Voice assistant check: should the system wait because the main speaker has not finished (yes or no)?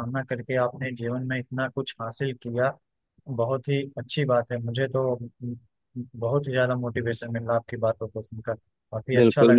no